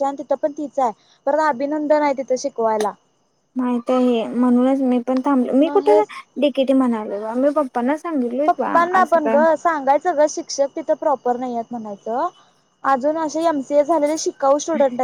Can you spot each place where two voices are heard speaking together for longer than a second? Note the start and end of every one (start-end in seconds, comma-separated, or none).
none